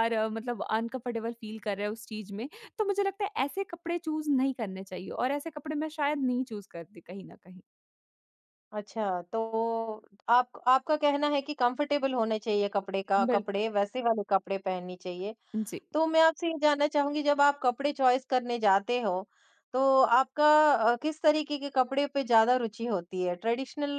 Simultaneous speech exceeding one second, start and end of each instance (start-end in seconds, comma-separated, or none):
none